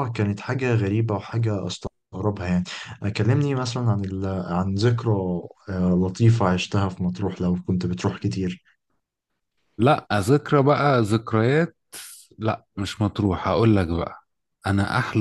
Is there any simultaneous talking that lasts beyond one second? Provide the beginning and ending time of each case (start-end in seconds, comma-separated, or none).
none